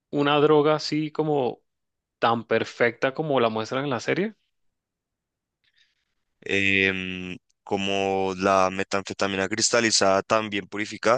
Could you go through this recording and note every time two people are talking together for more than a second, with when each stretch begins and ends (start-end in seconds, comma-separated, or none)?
none